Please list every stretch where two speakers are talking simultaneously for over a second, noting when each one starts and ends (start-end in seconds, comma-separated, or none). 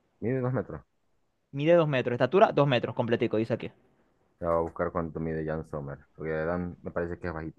none